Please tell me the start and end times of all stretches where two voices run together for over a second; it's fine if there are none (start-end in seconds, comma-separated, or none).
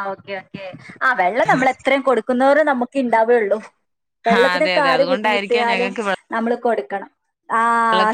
4.4-5.9